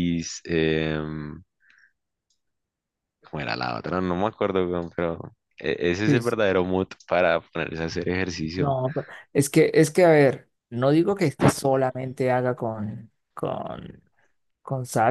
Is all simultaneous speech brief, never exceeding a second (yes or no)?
yes